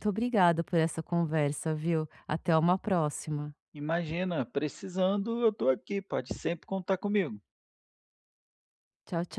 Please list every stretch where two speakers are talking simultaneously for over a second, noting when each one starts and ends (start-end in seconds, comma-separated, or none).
none